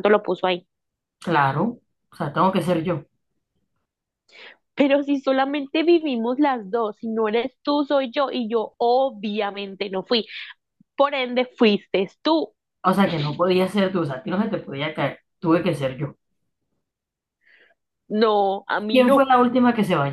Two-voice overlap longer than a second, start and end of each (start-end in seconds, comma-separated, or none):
none